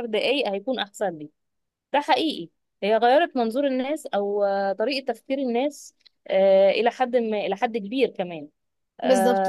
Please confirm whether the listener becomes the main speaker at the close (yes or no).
yes